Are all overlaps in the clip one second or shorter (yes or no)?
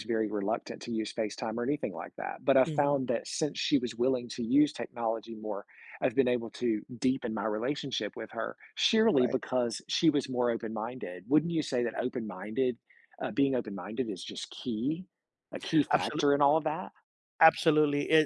yes